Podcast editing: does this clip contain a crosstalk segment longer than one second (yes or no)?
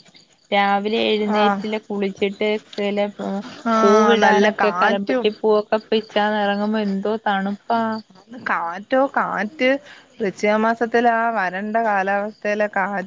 yes